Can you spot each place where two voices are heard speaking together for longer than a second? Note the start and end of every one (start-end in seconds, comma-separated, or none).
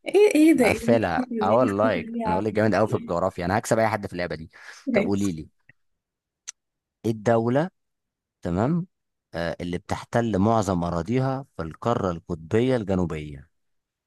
0.5-2.5